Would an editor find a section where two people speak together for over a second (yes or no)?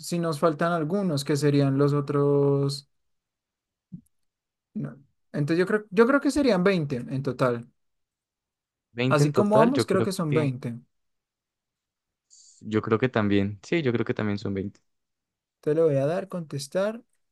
yes